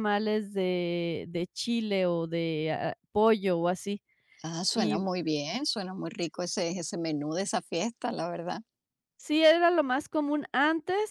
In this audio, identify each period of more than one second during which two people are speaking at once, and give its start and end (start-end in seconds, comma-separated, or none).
none